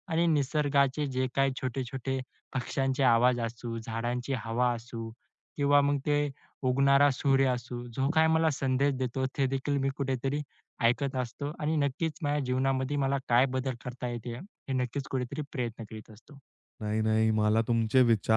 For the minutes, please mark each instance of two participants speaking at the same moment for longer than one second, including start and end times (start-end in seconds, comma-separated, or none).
none